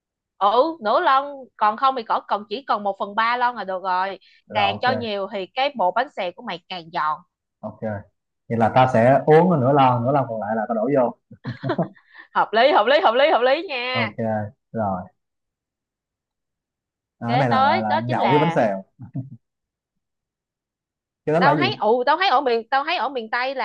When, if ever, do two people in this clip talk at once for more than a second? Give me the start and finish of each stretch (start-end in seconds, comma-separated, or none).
17.2-18.6